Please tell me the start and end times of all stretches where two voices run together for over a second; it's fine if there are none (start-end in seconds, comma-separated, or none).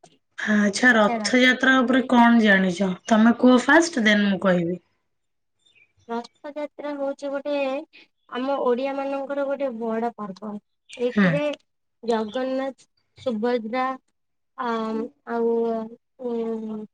none